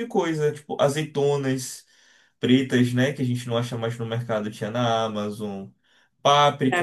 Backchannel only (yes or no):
no